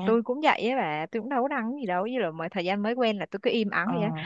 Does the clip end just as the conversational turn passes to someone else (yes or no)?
no